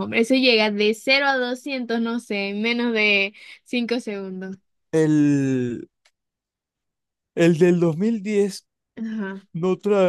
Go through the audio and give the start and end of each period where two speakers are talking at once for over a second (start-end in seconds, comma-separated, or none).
none